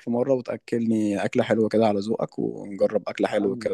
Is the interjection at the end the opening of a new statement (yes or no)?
yes